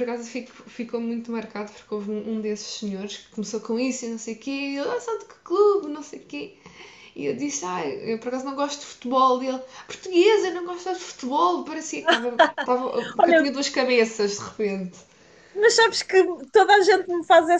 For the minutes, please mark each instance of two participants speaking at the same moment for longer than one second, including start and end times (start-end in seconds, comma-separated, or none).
none